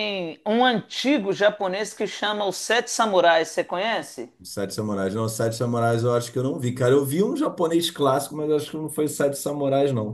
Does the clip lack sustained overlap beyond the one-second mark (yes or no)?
yes